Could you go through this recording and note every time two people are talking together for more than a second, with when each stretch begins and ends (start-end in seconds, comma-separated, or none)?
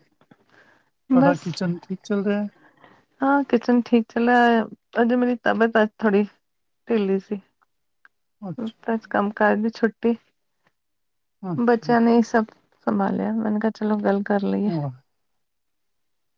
none